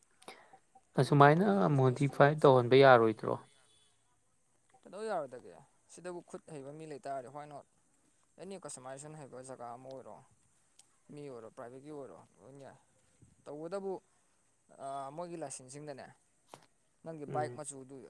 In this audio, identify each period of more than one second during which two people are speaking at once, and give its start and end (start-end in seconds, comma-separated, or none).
1.0-2.5